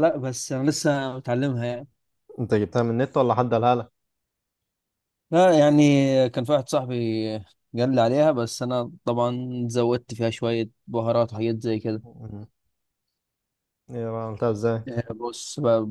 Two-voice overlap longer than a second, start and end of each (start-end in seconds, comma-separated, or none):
none